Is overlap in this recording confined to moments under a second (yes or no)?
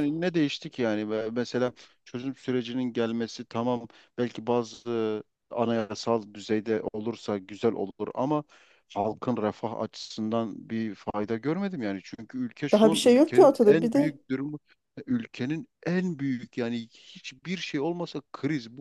no